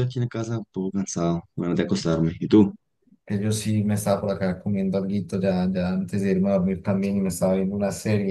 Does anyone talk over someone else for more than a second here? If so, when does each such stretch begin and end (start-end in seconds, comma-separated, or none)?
none